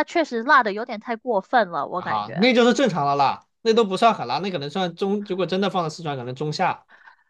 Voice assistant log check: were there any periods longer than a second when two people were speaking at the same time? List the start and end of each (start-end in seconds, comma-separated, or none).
none